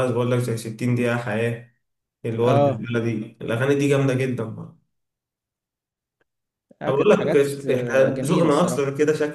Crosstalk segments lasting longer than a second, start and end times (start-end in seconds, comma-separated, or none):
6.9-8.8